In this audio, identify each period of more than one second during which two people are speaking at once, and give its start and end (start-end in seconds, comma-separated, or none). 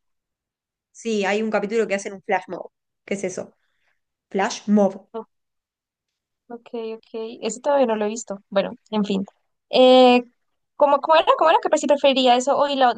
none